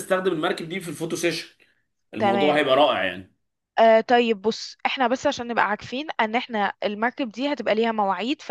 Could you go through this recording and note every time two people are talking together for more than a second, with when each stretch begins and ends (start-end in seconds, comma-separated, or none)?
none